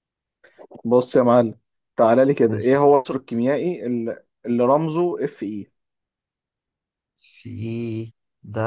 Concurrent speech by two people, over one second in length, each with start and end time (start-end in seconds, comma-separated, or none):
none